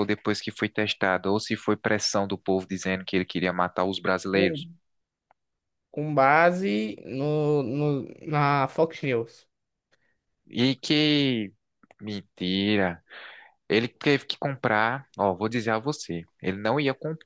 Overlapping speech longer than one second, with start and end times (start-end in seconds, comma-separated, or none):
none